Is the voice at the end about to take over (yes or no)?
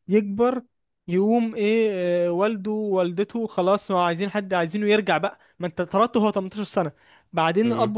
no